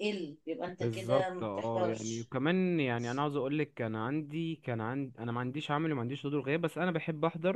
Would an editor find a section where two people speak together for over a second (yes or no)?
yes